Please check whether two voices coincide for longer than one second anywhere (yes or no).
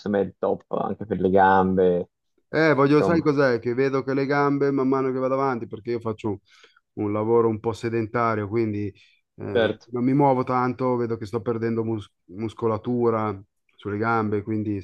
no